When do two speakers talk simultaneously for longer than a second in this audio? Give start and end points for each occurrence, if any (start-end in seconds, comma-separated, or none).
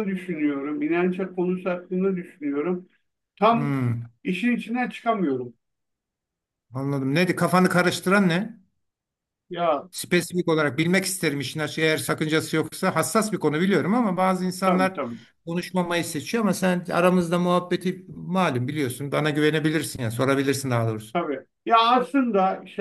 none